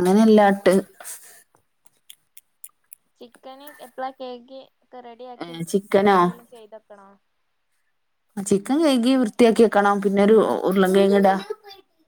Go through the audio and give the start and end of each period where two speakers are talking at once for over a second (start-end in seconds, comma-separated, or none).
none